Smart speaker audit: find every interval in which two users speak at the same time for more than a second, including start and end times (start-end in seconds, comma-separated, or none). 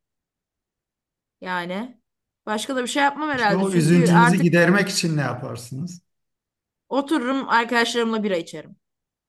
3.3-4.6